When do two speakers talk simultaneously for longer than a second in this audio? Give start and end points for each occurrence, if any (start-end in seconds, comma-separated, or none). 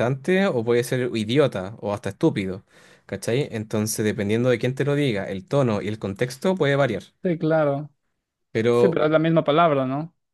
none